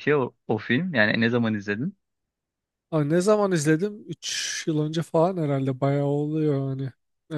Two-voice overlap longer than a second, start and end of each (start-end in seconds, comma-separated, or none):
none